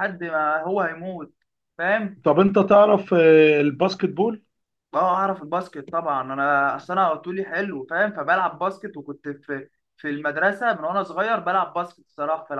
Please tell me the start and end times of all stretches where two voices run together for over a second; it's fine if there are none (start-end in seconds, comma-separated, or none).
none